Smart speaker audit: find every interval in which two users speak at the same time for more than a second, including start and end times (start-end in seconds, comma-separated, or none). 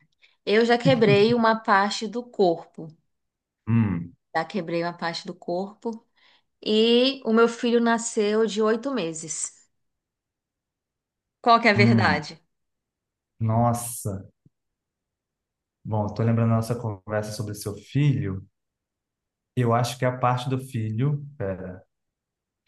none